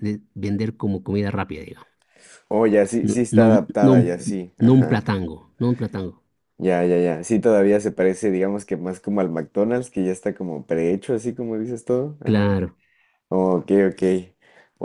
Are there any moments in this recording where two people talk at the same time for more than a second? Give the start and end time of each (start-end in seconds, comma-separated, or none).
3.0-5.1